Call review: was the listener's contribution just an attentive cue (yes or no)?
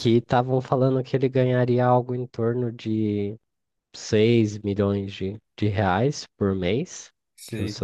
yes